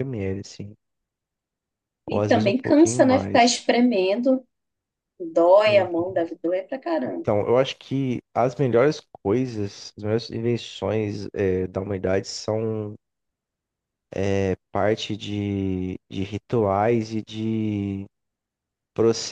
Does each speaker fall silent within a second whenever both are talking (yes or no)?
no